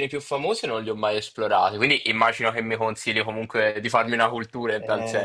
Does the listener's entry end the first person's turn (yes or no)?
yes